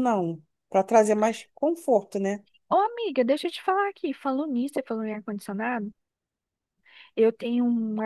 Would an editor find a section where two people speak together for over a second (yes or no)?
no